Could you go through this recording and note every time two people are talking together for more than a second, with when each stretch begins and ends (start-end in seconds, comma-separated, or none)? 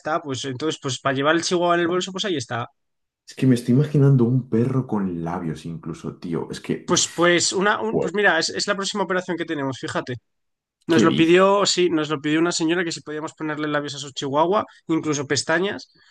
none